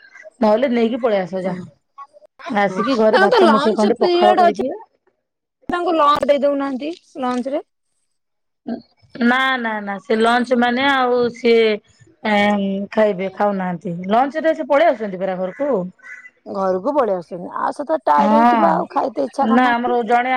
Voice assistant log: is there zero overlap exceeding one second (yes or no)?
no